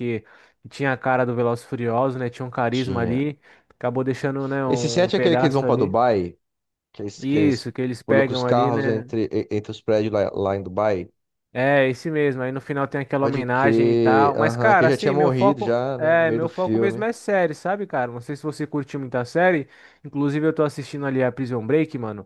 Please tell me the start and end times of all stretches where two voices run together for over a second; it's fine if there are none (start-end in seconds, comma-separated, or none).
4.7-6.0, 7.2-9.1, 13.2-17.1